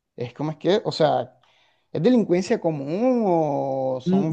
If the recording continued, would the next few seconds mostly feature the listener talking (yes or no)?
yes